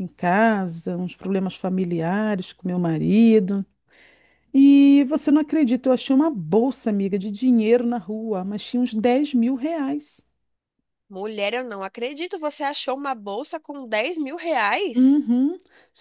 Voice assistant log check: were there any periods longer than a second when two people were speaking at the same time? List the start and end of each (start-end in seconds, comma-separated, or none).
none